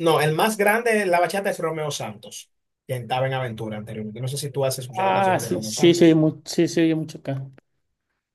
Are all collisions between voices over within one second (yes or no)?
no